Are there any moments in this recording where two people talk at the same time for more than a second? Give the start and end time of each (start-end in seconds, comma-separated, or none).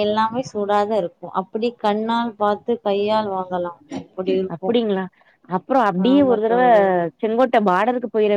none